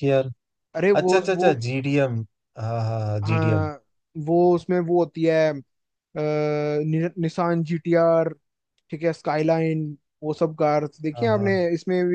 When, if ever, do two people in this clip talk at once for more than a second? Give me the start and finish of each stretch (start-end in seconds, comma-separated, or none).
none